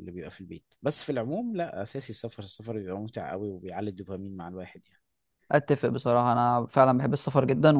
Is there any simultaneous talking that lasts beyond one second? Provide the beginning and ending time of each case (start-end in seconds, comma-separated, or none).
none